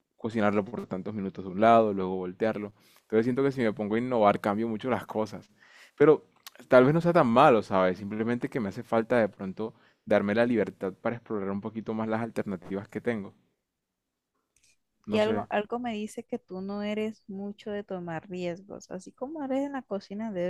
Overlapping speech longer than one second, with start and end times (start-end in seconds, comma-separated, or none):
none